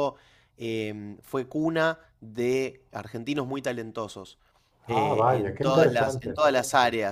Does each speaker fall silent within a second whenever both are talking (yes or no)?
no